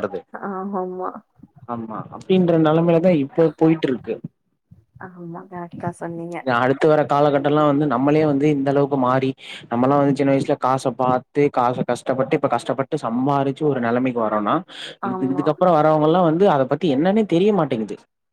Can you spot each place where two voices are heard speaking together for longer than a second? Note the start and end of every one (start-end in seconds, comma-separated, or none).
none